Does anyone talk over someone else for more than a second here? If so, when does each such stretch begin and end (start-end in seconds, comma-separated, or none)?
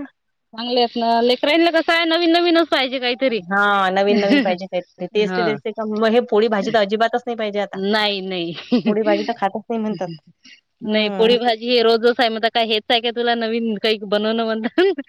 none